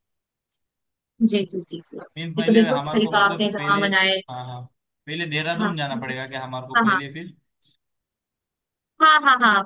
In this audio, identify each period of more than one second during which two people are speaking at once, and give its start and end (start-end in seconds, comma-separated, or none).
2.4-3.8